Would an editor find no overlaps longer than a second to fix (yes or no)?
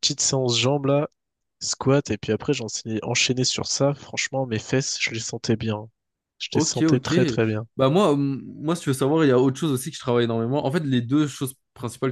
yes